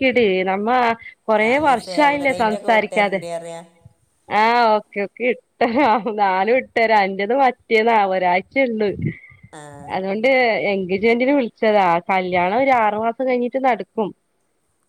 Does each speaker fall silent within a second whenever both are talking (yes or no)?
no